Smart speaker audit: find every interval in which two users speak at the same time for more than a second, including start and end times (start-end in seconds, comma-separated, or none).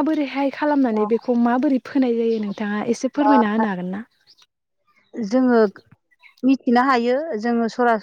none